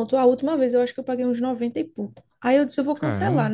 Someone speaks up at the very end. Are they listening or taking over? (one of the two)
listening